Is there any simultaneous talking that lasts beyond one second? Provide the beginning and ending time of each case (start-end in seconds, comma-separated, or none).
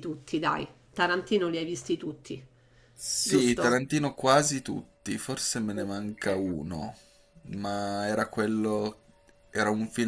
none